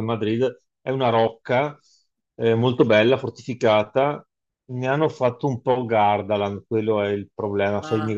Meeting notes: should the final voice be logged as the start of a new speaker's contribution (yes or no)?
no